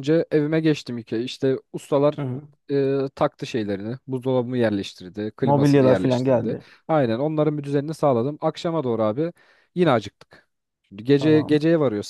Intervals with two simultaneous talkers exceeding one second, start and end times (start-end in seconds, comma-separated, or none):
5.4-6.7